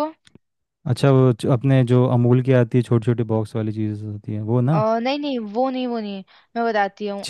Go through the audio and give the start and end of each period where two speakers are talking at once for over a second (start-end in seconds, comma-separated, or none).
none